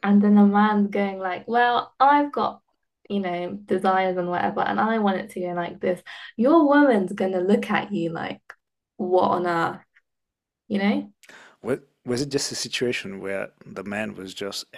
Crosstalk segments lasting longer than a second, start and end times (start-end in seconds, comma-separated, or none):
none